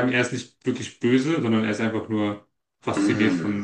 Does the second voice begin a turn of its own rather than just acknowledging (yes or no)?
yes